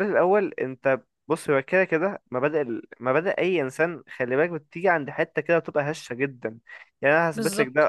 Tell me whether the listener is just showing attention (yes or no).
yes